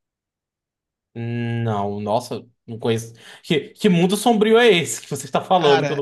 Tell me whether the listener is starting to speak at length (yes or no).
yes